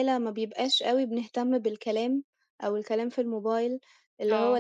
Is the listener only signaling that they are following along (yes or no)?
yes